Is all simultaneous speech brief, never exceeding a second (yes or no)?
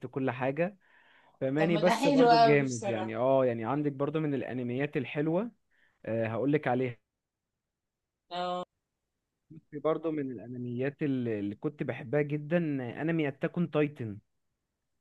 no